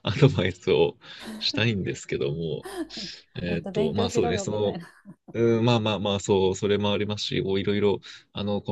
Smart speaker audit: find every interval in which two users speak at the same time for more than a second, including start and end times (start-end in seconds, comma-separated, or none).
3.3-4.8